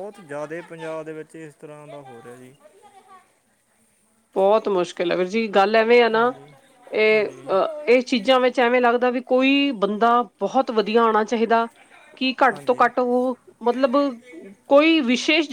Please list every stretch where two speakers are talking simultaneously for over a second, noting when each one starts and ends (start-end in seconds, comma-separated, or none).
none